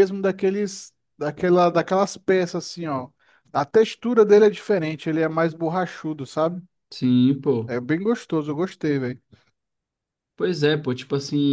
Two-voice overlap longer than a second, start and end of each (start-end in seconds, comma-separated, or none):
none